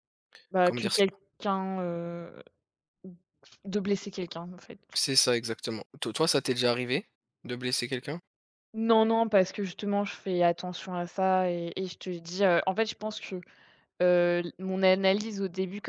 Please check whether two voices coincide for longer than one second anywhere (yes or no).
no